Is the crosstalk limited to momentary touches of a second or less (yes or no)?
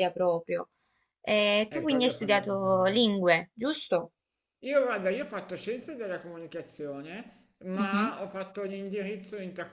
no